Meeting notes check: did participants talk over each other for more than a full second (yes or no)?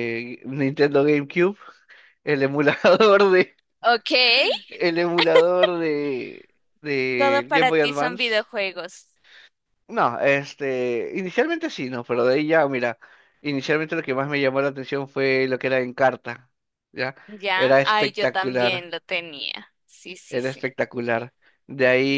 yes